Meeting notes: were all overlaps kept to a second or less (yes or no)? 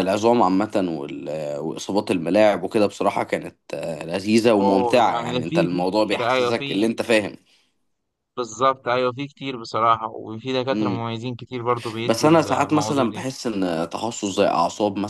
no